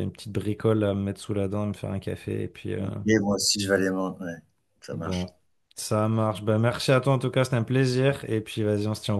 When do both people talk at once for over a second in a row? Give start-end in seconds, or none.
none